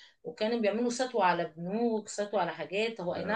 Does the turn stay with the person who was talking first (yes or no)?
yes